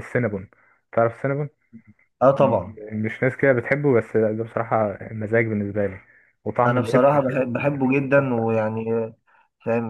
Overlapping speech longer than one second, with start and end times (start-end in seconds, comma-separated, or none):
6.7-8.5